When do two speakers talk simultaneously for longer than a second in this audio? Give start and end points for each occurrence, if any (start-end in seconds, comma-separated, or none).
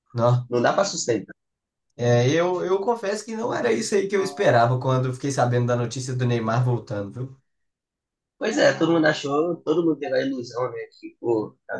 none